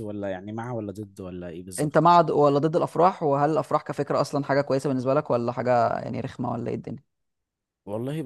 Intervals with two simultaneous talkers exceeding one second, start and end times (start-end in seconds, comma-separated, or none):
none